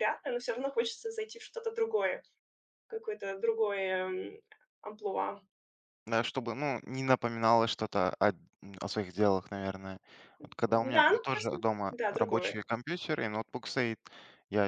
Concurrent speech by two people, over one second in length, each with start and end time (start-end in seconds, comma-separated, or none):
10.9-12.6